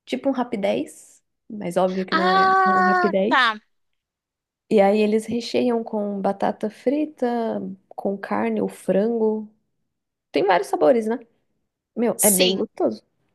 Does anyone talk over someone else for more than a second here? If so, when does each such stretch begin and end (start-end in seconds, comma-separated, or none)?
2.1-3.5